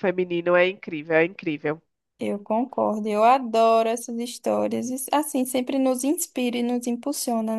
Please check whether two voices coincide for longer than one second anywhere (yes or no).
no